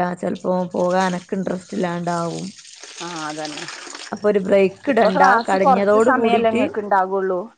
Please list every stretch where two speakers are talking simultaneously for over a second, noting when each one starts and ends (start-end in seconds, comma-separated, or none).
4.9-6.6